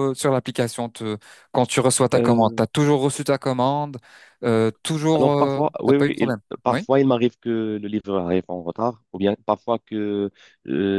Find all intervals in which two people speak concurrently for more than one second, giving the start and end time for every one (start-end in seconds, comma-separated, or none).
5.2-6.9